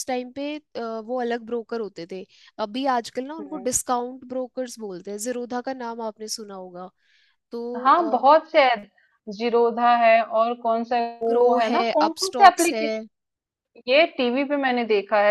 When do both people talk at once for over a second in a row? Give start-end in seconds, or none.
11.3-12.9